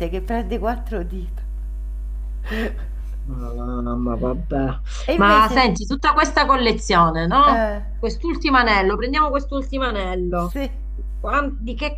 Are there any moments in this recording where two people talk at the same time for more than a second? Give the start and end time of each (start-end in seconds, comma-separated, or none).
none